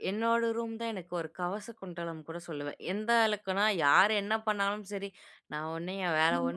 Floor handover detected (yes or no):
no